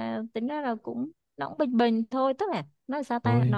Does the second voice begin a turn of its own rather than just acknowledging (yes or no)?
no